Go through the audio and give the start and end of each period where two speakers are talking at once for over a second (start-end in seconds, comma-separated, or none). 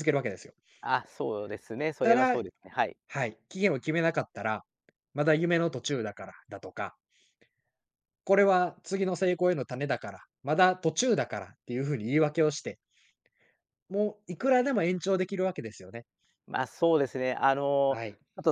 none